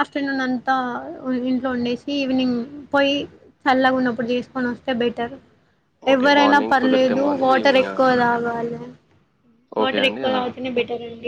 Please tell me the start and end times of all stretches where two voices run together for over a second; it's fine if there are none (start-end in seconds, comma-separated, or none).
6.1-8.0